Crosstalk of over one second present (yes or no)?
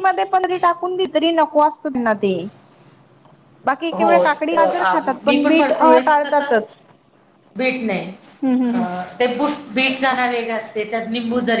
yes